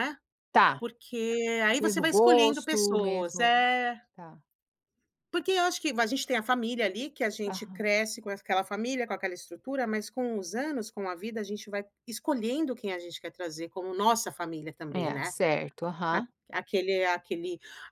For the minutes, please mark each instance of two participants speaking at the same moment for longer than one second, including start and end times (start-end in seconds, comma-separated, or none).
1.8-3.5